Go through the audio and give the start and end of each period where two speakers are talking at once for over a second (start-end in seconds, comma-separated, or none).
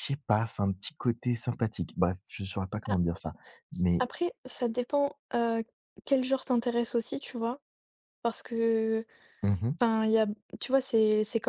none